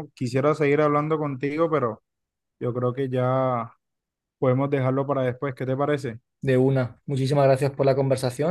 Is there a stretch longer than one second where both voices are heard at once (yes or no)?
no